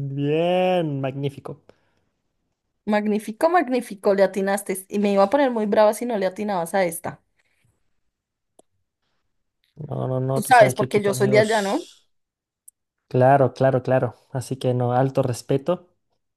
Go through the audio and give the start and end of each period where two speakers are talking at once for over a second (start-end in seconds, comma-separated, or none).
10.3-11.9